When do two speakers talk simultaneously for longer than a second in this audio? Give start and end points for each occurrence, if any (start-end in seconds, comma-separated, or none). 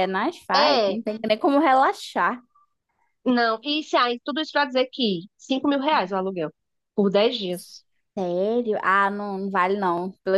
none